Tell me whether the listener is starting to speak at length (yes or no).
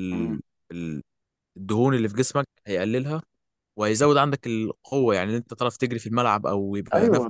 yes